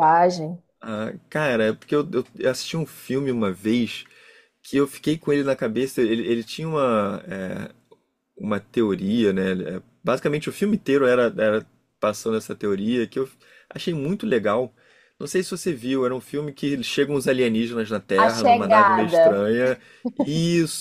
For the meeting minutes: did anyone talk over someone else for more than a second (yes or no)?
yes